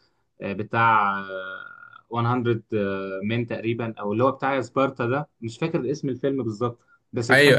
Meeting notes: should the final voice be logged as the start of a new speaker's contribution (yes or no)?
no